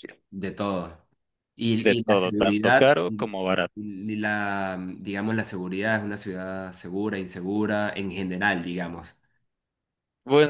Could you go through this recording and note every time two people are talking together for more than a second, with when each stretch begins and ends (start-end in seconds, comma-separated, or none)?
1.8-3.3